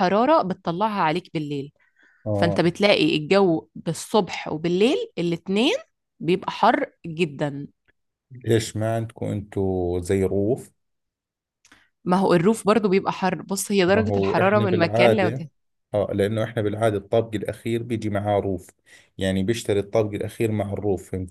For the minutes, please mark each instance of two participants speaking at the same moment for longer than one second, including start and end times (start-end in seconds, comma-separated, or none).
13.9-15.5